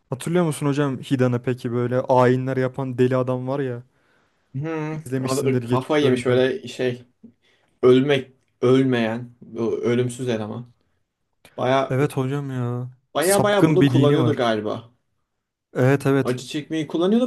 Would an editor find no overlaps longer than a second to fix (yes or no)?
no